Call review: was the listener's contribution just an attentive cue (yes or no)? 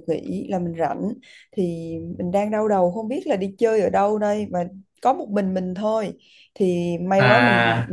yes